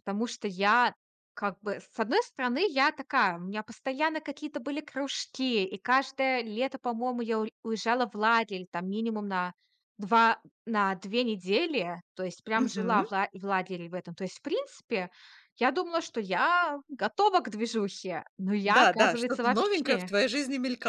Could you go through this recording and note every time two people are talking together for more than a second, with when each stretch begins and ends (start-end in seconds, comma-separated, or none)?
18.6-20.1